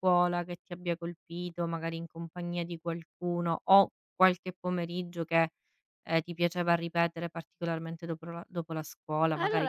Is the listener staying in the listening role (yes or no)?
no